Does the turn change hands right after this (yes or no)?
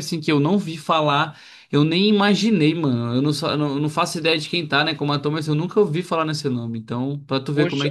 yes